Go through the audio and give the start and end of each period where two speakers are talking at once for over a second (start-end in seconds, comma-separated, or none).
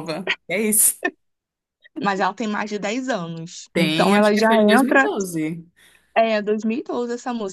3.7-5.1